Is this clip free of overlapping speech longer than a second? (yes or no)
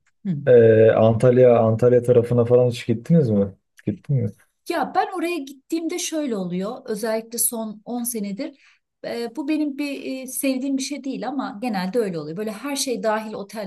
yes